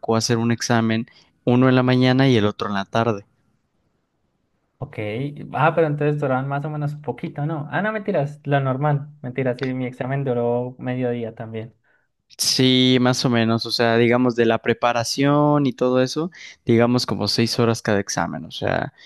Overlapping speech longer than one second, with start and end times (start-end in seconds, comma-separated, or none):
none